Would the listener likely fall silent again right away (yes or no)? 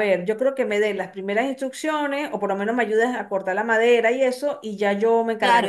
no